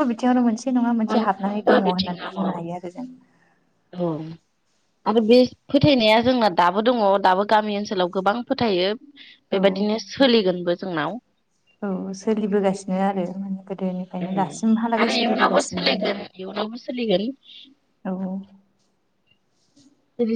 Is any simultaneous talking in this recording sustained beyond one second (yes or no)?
yes